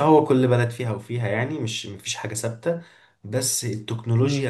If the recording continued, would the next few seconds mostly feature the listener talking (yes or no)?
no